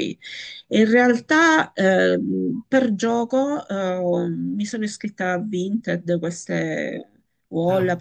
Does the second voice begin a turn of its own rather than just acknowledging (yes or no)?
no